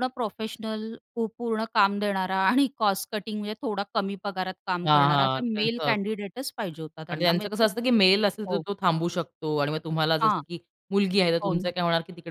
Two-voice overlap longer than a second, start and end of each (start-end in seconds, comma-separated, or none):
4.8-6.3